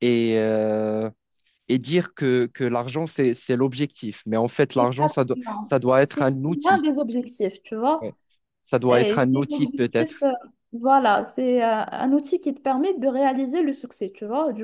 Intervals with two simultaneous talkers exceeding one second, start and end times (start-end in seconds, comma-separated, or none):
4.8-6.8, 8.9-10.2